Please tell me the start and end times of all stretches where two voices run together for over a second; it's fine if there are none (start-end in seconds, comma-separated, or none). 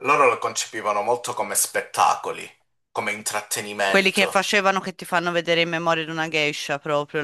none